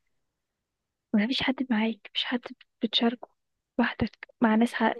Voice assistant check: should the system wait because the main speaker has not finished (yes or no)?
yes